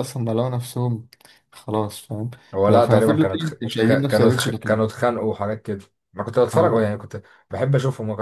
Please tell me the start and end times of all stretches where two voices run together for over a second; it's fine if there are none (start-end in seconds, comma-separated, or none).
2.7-4.8